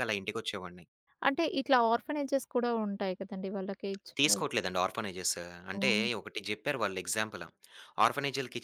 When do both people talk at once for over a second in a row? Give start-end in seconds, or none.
none